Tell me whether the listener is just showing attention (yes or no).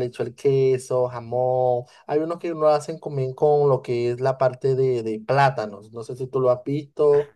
no